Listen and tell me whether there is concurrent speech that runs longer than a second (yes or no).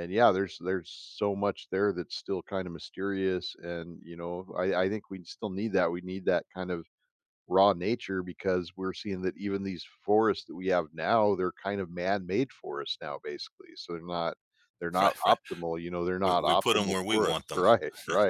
yes